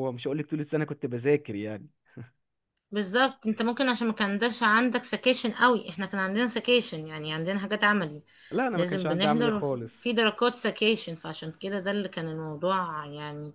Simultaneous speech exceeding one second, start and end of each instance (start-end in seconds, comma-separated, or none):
8.7-10.1